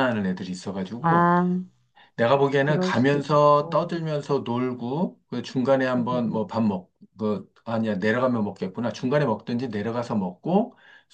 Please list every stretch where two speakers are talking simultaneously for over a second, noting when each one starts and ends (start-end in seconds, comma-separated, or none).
2.6-3.8